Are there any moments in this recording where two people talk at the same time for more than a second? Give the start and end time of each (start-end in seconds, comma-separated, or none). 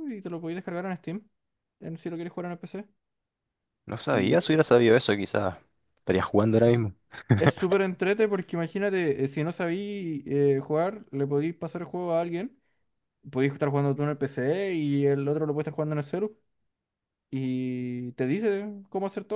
none